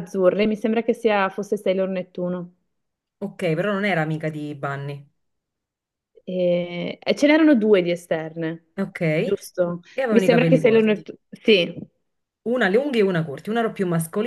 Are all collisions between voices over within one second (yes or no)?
no